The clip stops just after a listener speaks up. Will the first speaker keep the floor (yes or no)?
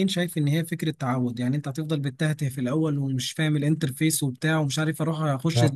yes